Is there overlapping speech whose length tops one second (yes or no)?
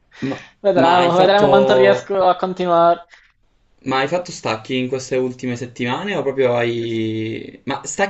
yes